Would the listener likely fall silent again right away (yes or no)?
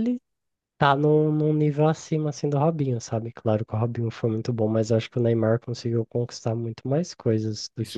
no